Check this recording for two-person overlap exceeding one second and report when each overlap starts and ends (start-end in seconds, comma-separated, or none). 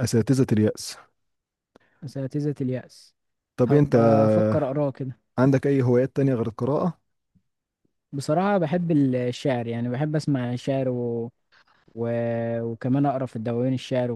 none